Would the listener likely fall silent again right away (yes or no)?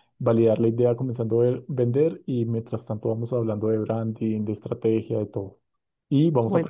yes